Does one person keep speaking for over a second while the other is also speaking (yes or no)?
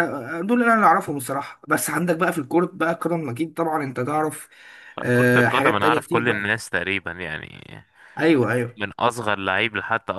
yes